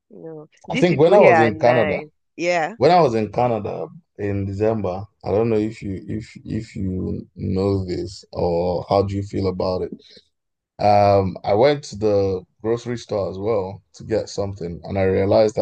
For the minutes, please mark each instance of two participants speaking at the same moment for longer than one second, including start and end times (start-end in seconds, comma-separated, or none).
0.7-2.0